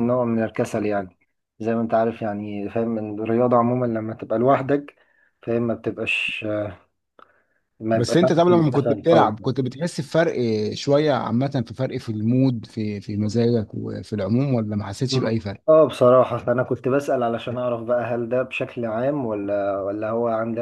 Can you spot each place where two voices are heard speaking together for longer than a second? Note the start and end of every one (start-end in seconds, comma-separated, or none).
7.9-9.3